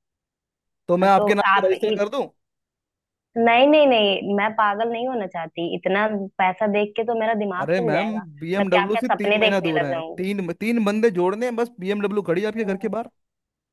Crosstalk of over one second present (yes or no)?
yes